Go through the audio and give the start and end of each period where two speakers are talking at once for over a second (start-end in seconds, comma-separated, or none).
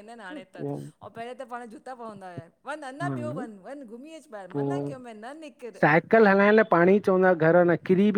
none